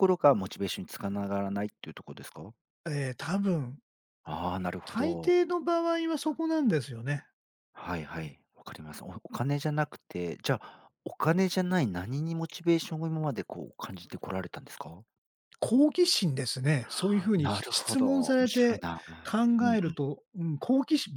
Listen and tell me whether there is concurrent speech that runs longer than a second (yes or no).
yes